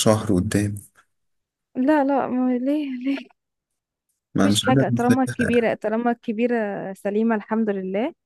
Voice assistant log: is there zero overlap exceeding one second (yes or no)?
no